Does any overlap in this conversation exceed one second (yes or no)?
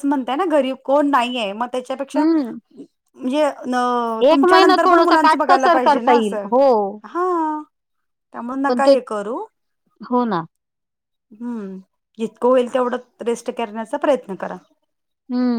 yes